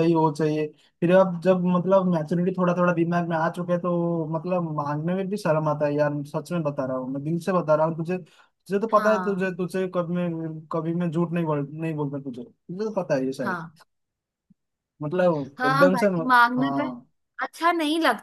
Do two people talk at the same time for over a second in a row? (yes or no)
yes